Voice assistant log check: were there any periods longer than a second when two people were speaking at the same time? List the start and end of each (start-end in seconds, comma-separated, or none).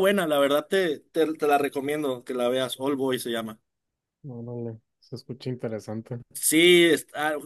none